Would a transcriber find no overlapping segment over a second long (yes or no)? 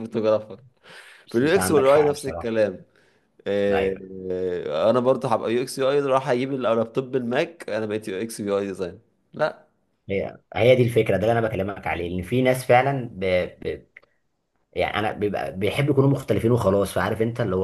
no